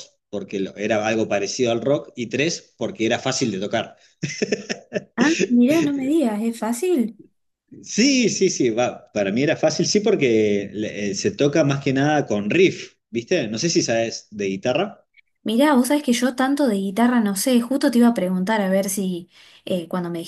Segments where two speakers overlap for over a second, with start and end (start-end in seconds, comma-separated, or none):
none